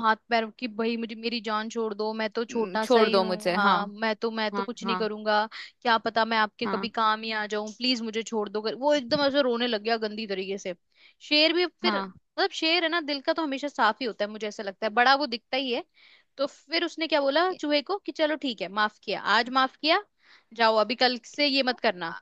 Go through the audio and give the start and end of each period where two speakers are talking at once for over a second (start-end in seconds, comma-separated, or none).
2.5-3.8